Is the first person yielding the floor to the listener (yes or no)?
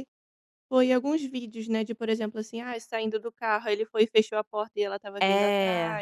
no